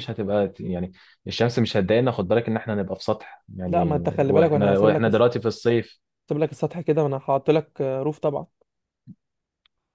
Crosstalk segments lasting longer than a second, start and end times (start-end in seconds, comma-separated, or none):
3.6-5.2